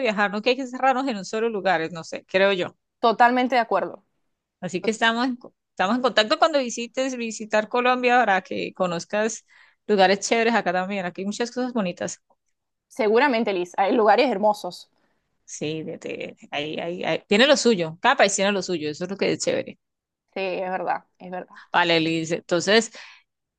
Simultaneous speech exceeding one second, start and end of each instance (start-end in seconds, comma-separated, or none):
none